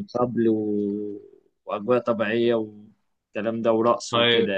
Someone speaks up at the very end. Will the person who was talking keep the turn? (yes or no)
no